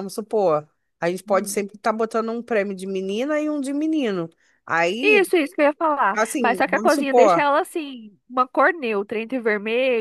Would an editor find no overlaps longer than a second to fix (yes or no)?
no